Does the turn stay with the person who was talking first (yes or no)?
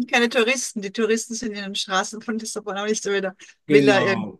no